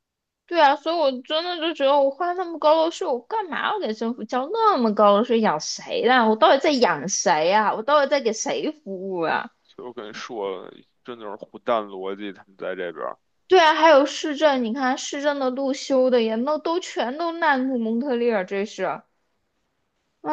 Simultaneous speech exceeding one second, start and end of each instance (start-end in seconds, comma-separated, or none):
none